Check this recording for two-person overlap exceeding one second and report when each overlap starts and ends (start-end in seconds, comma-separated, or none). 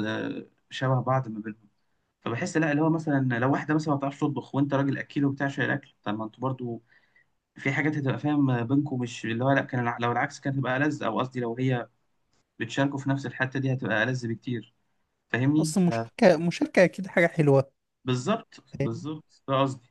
none